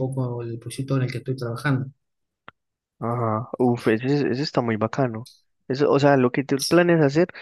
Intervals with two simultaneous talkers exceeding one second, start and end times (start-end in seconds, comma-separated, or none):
none